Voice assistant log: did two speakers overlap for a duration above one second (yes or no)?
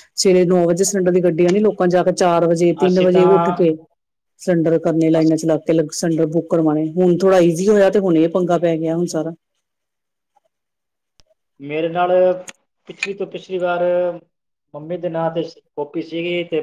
no